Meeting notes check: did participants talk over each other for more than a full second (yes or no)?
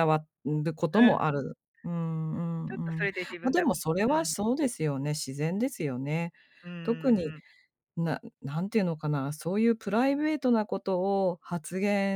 yes